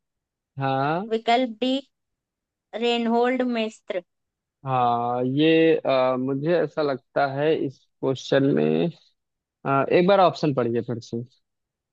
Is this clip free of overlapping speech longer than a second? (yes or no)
yes